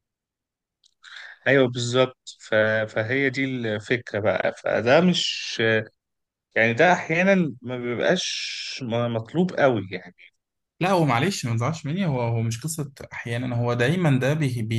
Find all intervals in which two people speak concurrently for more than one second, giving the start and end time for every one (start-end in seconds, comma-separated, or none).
none